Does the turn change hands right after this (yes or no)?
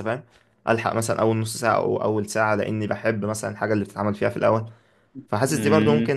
no